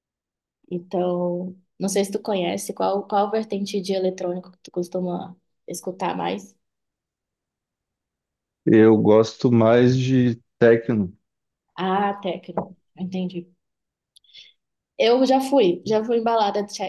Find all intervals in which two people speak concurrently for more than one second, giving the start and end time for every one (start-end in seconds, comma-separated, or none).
none